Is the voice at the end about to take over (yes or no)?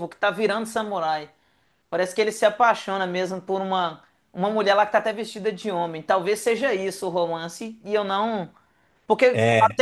no